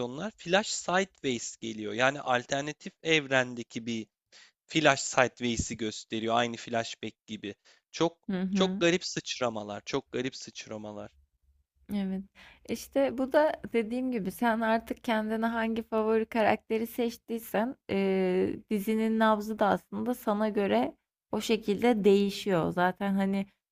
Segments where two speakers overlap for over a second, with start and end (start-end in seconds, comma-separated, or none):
none